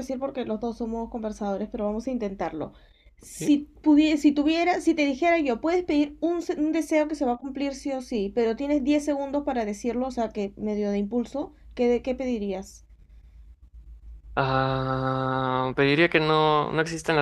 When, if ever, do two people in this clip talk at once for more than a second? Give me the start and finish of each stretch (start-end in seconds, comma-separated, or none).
none